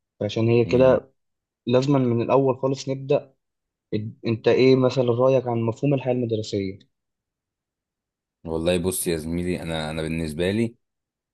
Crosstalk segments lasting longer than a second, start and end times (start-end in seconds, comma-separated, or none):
none